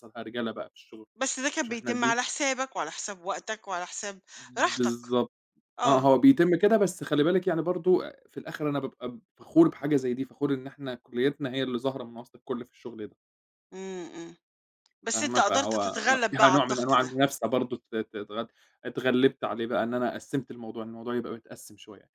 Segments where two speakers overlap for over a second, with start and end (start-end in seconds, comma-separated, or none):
15.1-17.1